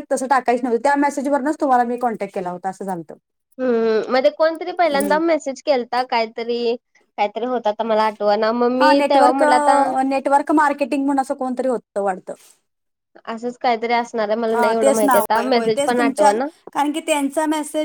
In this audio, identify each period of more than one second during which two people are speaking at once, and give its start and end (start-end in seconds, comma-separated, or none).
14.5-16.3